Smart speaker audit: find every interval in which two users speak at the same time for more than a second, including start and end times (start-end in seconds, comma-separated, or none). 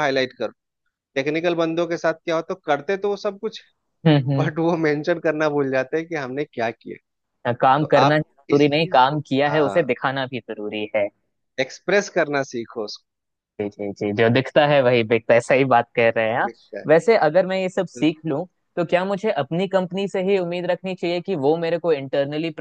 7.8-9.8